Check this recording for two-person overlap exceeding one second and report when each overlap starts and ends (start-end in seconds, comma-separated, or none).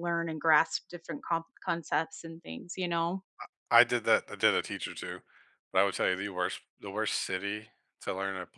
none